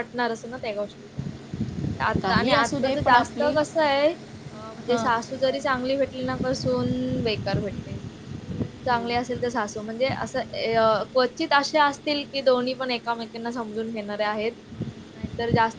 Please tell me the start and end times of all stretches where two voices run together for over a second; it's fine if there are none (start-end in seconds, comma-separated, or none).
2.2-3.5